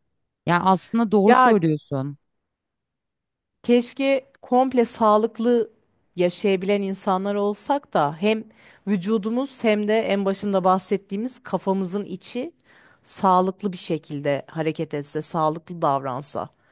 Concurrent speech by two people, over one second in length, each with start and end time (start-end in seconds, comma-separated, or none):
none